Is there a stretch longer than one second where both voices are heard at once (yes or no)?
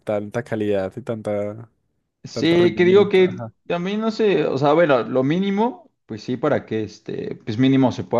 yes